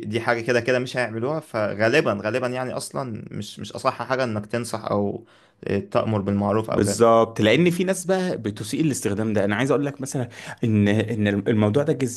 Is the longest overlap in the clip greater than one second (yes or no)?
no